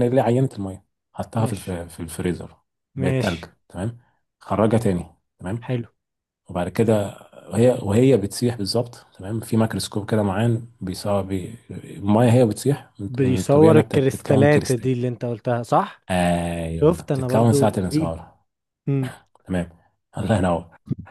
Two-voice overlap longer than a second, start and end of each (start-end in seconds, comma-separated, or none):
13.1-14.9, 16.7-18.2